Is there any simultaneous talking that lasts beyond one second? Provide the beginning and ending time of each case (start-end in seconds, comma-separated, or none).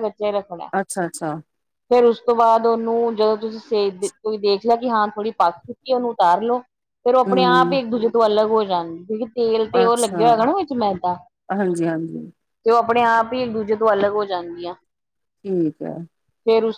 none